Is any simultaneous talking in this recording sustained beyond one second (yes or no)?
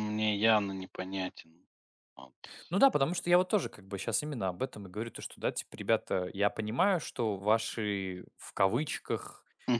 no